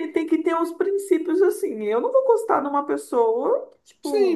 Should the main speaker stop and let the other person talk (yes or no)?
yes